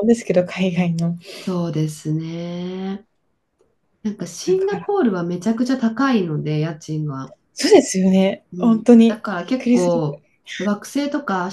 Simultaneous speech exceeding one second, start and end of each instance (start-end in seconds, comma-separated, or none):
8.5-10.2